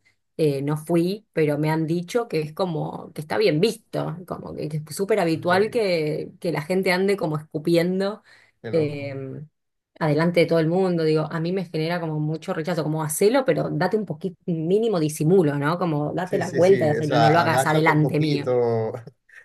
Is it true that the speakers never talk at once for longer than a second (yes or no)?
no